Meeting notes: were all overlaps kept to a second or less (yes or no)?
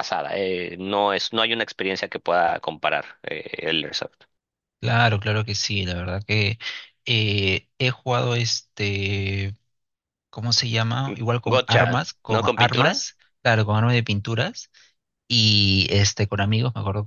no